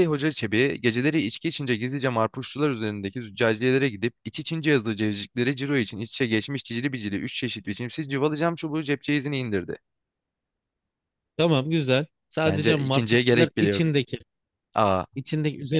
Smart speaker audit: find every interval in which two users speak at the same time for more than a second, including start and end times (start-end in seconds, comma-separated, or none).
12.4-13.8